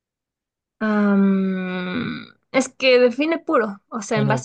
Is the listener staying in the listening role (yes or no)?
no